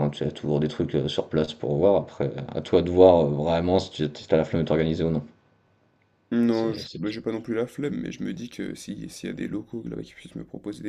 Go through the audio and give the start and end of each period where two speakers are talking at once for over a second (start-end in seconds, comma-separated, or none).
none